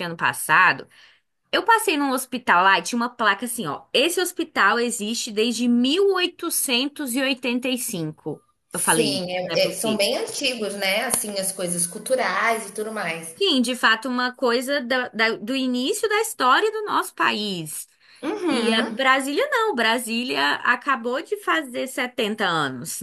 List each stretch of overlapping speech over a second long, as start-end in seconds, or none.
8.7-10.1